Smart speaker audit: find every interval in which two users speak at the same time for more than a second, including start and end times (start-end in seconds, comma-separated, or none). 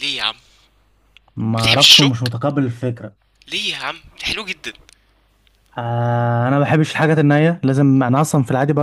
none